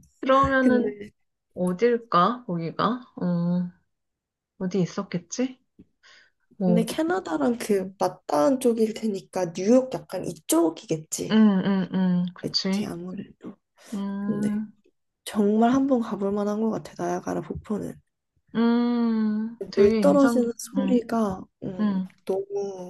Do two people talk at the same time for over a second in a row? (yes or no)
yes